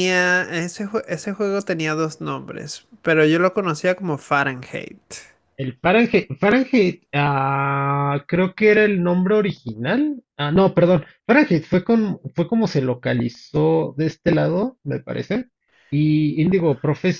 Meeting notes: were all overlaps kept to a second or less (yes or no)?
yes